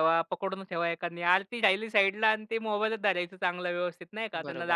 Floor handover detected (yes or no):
yes